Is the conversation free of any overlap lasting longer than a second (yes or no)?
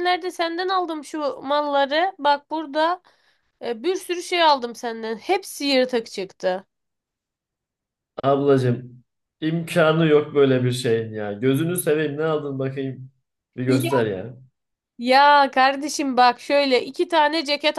yes